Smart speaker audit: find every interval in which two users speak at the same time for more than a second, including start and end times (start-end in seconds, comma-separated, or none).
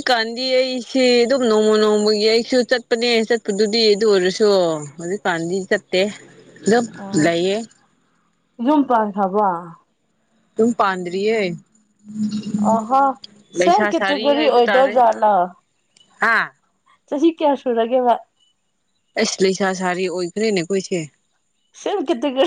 13.6-15.0